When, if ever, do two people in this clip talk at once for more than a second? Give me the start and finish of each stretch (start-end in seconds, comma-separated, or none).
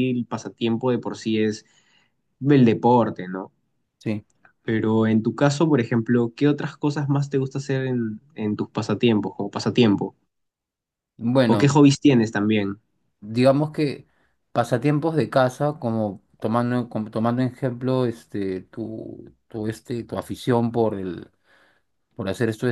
none